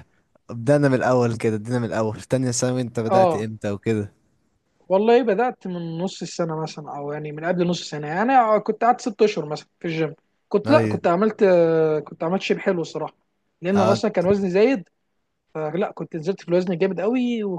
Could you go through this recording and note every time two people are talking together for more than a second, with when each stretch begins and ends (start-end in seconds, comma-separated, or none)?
none